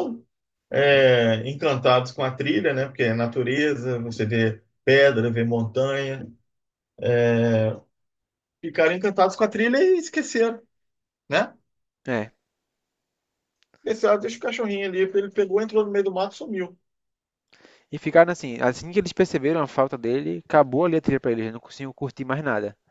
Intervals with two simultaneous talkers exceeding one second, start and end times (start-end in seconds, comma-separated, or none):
none